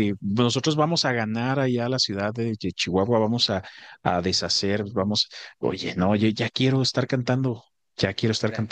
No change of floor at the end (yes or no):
no